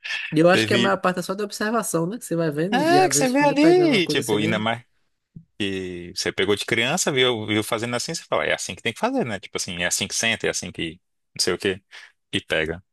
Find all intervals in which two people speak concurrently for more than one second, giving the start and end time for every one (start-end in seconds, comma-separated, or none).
2.7-4.7